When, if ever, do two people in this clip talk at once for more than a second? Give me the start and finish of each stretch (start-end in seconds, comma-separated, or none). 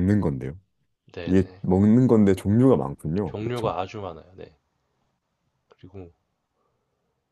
none